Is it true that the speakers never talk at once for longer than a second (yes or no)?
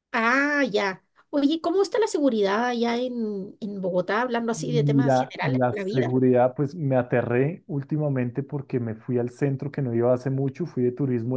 no